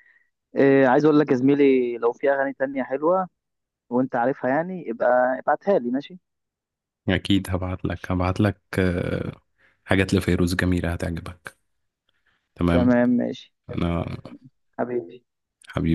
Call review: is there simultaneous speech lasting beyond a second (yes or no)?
no